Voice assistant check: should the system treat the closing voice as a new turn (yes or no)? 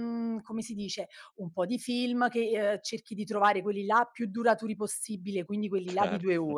no